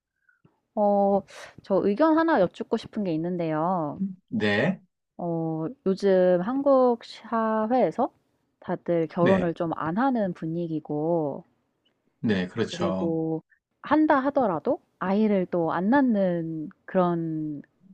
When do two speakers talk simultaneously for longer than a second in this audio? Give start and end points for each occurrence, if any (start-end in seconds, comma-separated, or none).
none